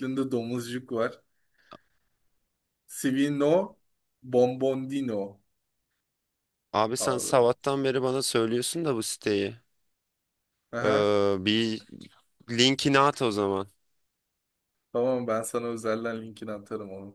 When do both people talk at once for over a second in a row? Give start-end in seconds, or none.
none